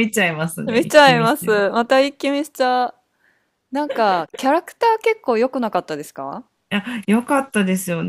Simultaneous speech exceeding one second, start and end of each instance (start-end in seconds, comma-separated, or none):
0.7-1.9